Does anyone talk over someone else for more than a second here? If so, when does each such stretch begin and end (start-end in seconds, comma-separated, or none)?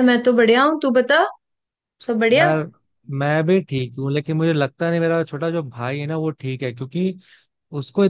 none